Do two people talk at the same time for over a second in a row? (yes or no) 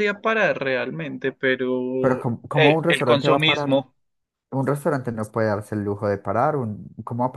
yes